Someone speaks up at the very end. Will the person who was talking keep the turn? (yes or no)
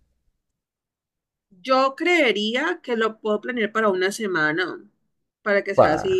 yes